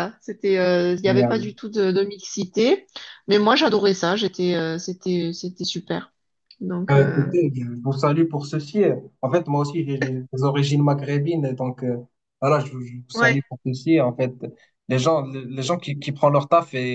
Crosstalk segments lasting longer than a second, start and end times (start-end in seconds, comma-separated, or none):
none